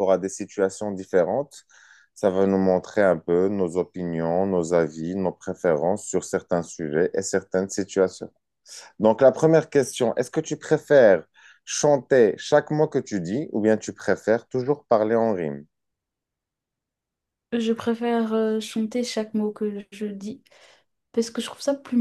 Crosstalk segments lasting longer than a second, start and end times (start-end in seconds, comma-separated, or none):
none